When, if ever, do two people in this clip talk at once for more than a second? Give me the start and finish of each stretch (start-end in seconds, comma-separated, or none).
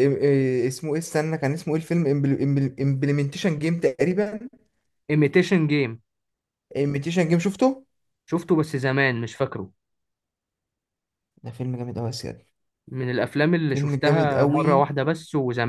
13.7-14.9